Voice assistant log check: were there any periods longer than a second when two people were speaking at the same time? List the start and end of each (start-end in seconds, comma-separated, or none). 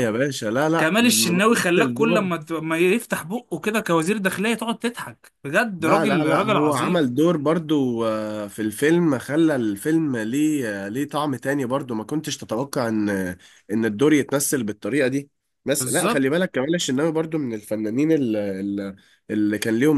0.8-2.3, 5.8-7.0